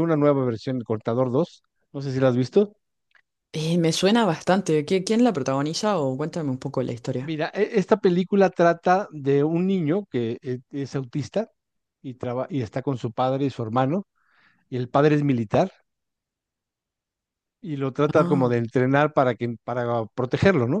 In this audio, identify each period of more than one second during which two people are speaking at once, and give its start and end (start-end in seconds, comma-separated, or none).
none